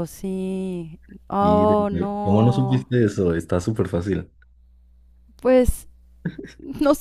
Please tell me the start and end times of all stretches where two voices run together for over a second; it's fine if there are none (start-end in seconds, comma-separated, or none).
1.4-2.9